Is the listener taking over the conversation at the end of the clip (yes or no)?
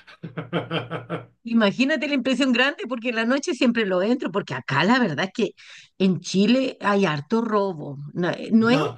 no